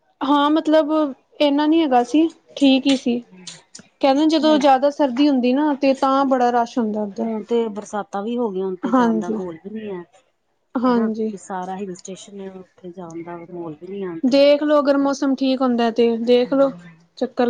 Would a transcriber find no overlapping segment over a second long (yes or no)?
yes